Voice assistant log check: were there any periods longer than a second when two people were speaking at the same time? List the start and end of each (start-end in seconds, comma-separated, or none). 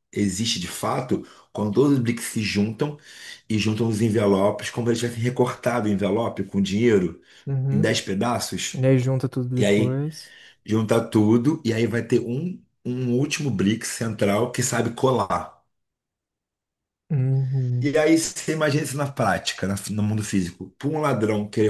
none